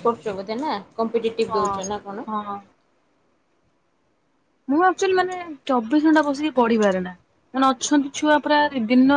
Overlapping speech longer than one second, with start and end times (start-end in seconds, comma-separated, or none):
none